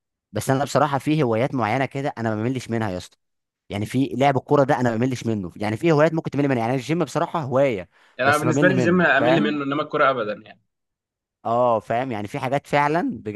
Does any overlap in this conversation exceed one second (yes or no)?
yes